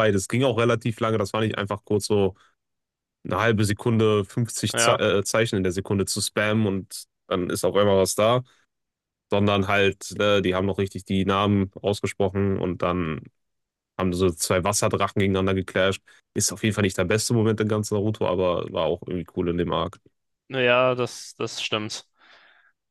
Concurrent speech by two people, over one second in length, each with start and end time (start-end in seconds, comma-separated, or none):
none